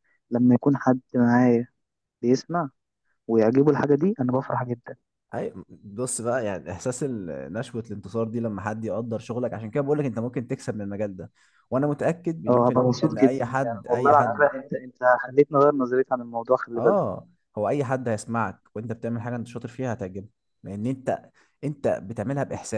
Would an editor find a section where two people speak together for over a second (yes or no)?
yes